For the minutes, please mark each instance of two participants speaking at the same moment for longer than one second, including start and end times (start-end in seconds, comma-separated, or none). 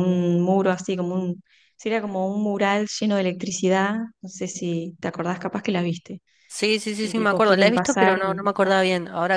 7.0-8.7